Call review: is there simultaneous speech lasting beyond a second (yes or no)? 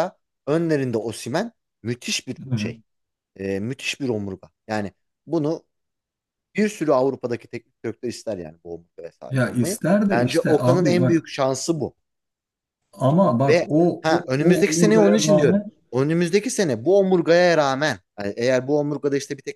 yes